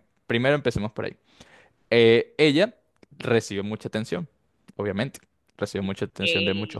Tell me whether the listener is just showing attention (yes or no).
yes